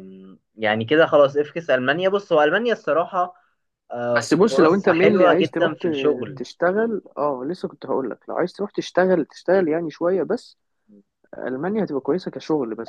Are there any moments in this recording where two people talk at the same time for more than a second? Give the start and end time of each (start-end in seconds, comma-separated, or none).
4.1-6.4